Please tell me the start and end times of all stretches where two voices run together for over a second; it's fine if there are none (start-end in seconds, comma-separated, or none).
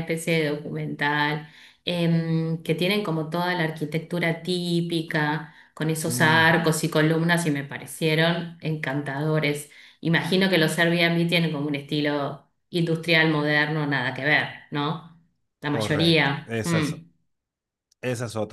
15.7-16.9